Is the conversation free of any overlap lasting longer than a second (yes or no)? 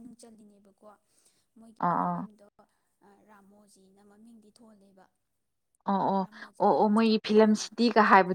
yes